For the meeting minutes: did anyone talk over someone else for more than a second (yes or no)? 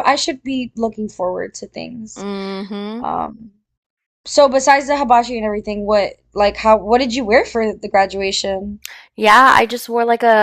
no